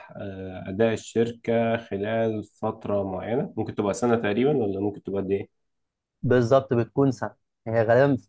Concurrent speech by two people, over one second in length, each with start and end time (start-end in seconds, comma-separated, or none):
none